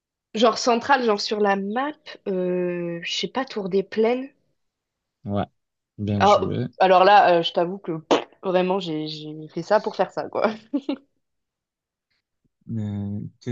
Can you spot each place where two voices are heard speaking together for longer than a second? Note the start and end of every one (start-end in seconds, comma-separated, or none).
none